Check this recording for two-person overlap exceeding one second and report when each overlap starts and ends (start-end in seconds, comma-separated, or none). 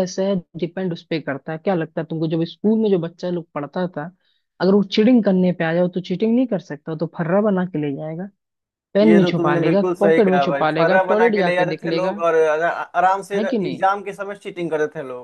9.0-12.1